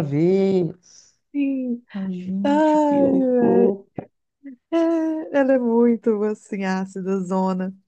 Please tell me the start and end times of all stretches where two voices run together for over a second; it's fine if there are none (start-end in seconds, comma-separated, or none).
2.4-3.7